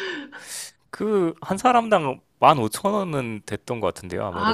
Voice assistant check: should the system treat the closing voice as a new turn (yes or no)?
yes